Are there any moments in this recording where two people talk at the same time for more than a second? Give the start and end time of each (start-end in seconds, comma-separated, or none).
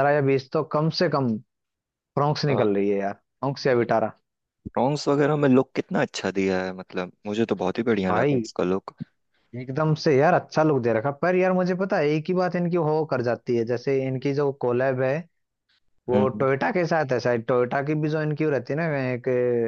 none